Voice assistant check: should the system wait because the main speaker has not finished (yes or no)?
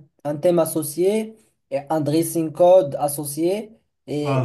yes